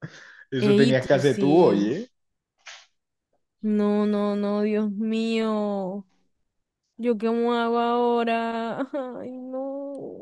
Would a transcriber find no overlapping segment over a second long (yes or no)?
no